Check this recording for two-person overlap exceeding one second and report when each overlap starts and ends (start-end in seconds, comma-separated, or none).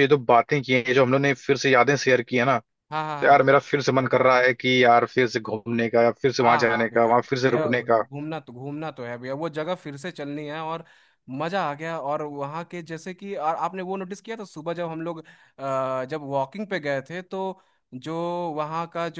6.4-8.0